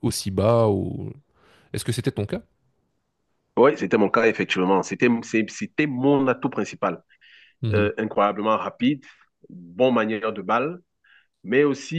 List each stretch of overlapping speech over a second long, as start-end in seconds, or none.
none